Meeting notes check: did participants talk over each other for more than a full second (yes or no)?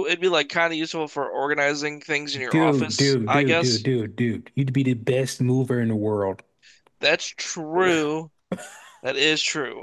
yes